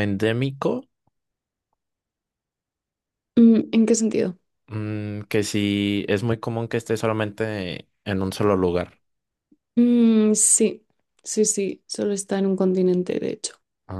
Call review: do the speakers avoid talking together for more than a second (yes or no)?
yes